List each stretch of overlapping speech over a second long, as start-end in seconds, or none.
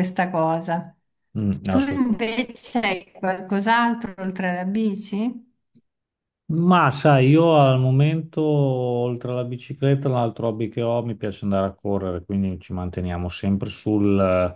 none